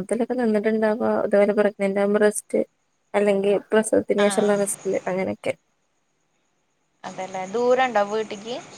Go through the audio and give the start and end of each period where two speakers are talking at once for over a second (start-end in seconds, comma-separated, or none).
none